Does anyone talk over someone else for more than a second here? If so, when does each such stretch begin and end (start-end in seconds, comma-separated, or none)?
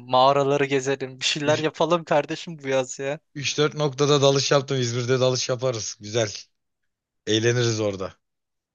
none